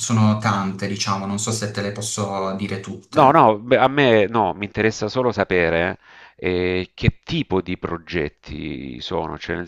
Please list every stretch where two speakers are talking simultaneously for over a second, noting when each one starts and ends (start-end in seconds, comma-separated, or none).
none